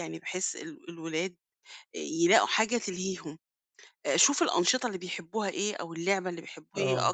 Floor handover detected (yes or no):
no